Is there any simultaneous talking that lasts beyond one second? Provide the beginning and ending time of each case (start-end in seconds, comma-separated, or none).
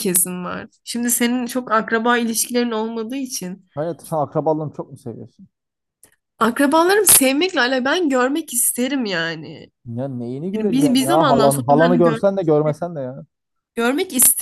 10.5-12.2